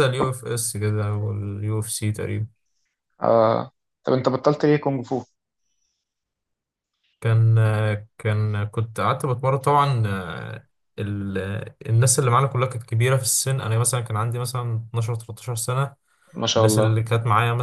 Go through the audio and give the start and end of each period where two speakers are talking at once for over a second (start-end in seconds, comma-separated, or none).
none